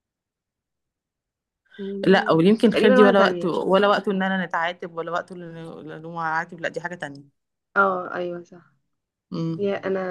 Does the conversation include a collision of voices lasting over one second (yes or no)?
yes